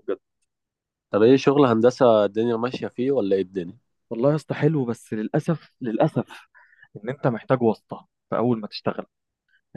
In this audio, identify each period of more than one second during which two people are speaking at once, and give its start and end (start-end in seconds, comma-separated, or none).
none